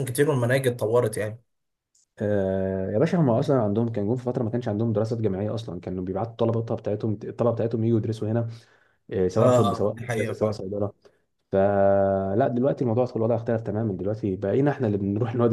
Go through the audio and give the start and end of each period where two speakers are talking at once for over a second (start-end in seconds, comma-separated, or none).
9.4-10.6